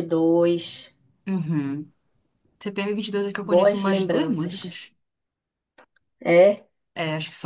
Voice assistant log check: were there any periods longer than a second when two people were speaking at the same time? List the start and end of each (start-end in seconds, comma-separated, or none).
3.4-4.8